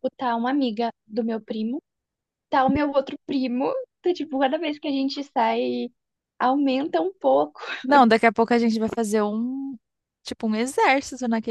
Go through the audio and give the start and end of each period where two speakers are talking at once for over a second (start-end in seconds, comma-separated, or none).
none